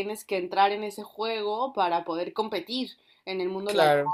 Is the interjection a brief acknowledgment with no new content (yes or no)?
yes